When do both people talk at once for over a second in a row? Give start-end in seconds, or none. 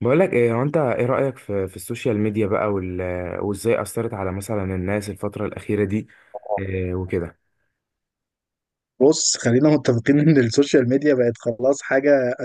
none